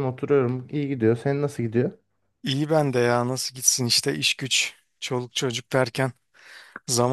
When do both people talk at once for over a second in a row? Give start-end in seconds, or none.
none